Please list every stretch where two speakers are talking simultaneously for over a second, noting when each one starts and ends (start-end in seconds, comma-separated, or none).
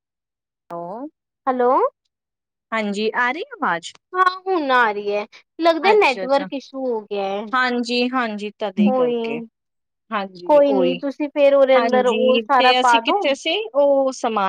11.8-13.2